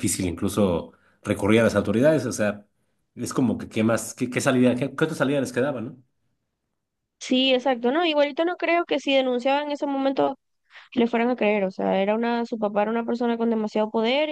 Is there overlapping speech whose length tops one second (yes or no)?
no